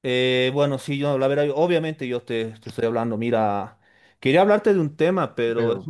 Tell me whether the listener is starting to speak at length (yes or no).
no